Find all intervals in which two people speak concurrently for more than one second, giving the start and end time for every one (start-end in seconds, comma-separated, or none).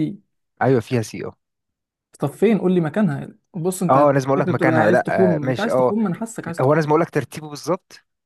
3.9-6.0